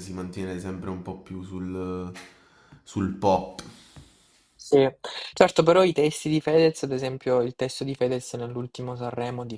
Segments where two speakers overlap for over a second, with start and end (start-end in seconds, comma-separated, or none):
none